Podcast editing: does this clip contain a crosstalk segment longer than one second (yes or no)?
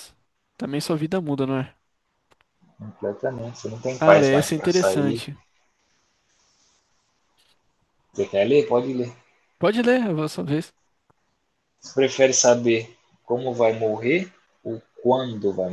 yes